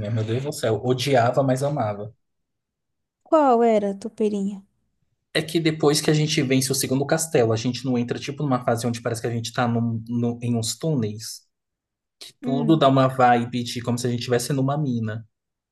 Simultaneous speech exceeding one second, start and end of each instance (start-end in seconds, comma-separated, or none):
none